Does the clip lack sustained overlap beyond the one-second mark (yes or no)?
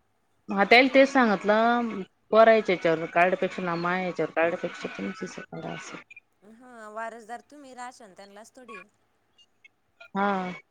yes